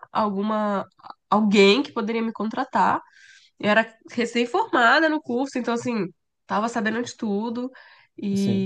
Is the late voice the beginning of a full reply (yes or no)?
no